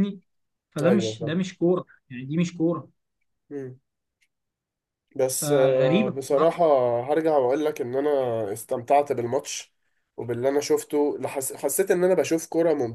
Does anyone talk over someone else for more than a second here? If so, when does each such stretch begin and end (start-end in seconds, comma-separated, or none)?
5.3-6.5